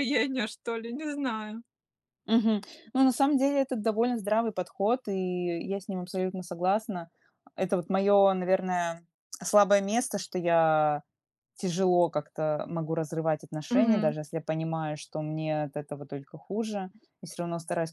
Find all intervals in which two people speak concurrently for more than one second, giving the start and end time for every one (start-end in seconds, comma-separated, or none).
none